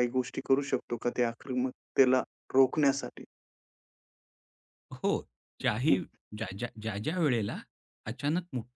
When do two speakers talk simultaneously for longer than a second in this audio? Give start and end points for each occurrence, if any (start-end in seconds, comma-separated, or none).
none